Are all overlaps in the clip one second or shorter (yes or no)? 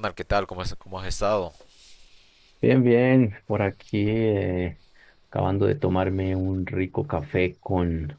yes